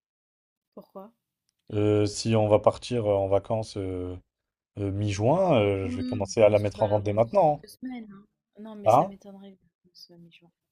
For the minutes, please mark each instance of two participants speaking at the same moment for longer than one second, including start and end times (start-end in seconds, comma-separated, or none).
5.8-7.6